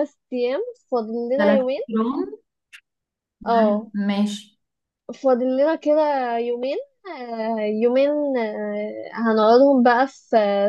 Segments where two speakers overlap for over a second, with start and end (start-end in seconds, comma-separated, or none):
none